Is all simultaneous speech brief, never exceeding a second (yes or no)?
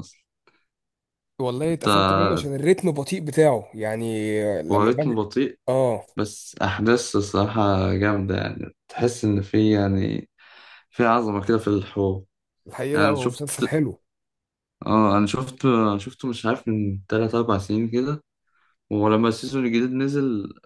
yes